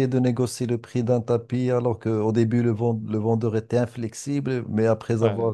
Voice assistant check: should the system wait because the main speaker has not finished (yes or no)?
yes